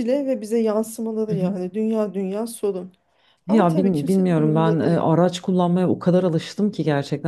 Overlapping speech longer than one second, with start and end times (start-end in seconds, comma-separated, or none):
3.5-5.0